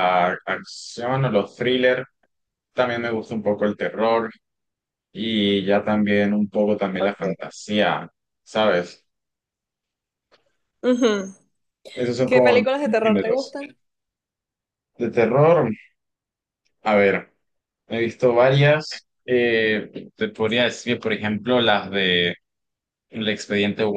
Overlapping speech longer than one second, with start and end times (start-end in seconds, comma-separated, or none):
12.2-13.6